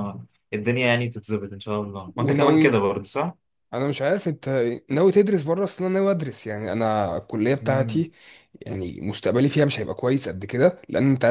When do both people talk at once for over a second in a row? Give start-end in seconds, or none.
none